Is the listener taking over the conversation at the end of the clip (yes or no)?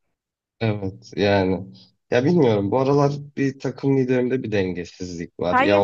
yes